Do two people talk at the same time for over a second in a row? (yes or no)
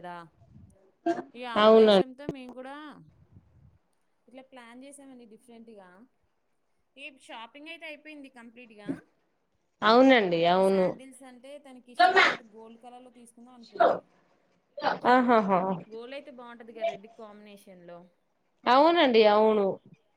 no